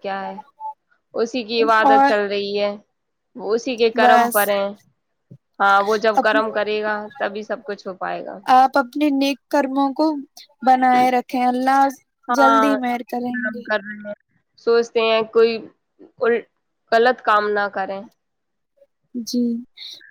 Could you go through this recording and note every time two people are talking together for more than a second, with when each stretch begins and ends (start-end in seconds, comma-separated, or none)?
none